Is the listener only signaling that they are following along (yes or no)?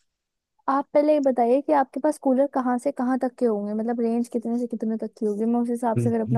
no